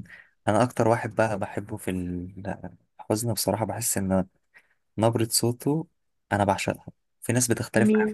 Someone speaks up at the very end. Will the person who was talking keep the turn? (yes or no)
yes